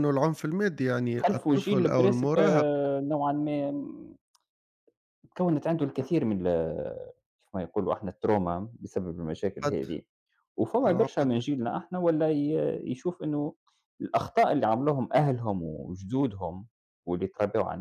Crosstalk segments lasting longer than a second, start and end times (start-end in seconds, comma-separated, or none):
1.2-2.7